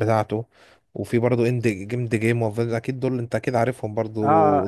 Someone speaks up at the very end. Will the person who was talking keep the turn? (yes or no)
no